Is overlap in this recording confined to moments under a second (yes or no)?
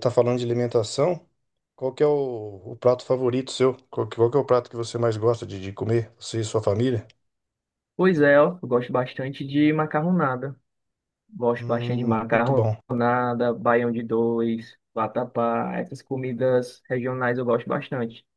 no